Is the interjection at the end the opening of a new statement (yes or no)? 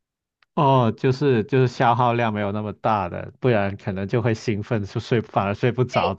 yes